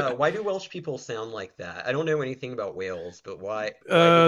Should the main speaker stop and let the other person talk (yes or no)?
yes